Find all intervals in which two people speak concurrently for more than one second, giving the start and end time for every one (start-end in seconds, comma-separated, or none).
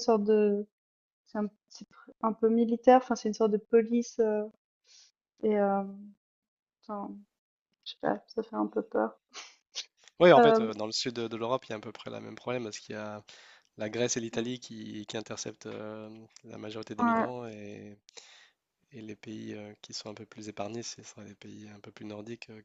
none